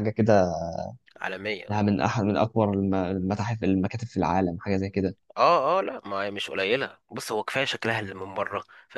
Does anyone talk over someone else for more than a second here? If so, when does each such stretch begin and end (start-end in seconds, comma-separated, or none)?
none